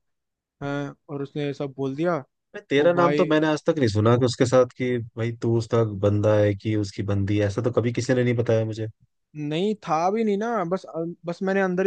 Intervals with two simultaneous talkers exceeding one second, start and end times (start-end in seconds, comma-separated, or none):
none